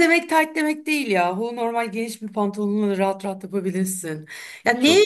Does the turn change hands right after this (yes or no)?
no